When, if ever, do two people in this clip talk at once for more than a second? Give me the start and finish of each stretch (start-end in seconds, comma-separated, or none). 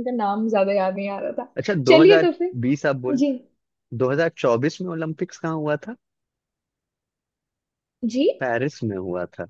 1.6-3.2